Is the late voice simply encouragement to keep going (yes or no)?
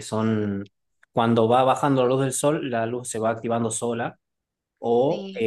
yes